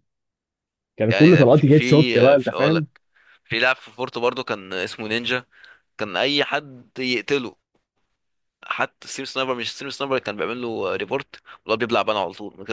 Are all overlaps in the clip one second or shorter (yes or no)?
no